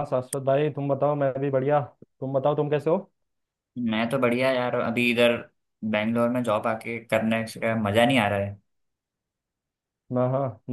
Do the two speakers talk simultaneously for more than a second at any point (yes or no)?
no